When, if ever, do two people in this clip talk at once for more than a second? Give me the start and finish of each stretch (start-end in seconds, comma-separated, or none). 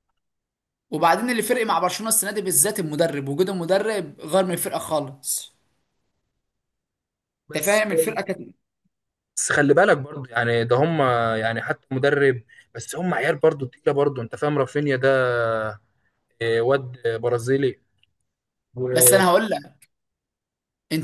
none